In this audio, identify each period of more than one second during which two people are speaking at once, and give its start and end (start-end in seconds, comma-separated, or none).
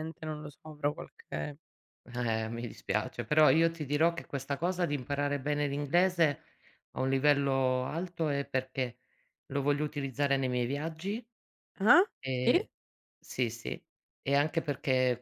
none